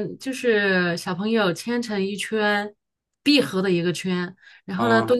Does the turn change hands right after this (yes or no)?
no